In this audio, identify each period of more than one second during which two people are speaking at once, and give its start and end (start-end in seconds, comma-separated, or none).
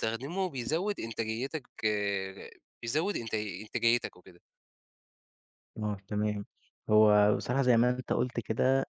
none